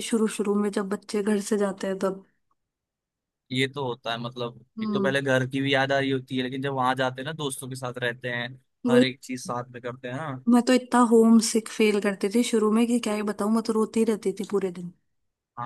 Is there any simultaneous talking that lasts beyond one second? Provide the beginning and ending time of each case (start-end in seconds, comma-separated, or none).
none